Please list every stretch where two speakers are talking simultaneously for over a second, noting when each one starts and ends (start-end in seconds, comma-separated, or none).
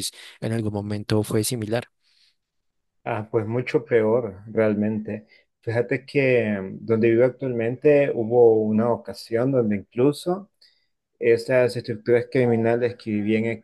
none